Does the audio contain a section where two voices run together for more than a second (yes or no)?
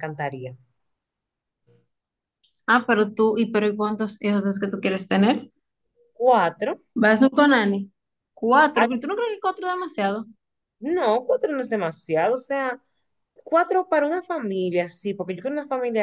no